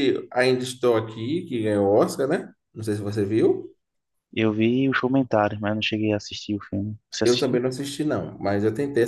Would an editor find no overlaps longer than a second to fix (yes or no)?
yes